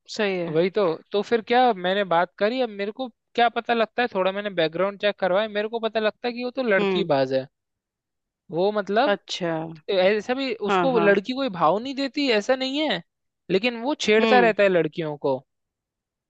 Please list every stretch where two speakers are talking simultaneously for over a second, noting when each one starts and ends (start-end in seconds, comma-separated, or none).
none